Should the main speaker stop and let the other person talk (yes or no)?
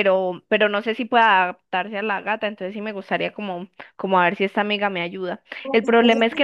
no